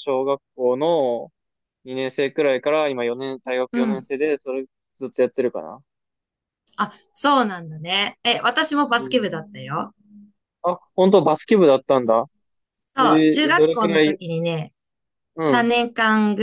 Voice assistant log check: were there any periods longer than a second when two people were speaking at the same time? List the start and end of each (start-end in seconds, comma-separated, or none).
13.0-14.2